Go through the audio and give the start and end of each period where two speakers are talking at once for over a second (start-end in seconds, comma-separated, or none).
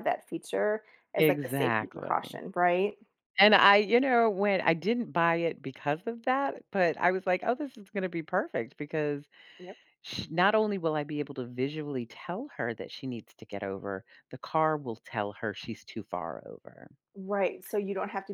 1.2-2.4